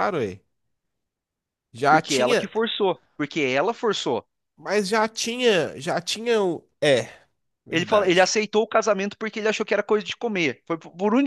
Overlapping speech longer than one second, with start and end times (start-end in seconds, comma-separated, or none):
none